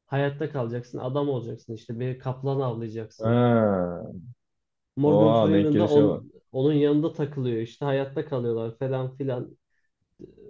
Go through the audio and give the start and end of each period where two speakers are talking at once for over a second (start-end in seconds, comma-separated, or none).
5.0-6.3